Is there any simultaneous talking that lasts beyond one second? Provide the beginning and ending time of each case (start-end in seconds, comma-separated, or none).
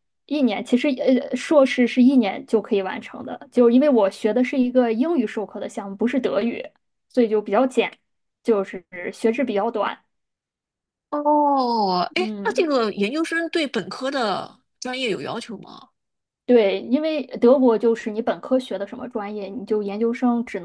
none